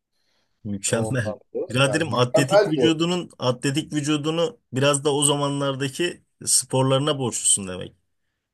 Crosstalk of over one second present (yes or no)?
yes